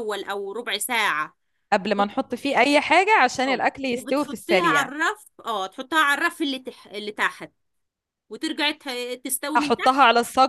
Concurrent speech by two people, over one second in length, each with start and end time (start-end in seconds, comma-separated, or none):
3.5-4.9